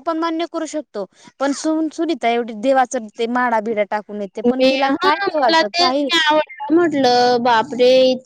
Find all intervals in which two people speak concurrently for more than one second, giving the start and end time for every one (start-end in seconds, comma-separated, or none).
none